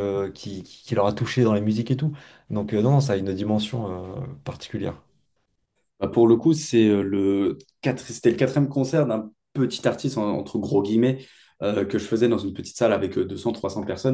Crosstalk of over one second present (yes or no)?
no